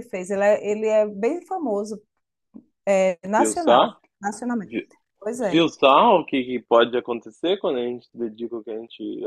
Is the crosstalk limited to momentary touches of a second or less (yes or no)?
yes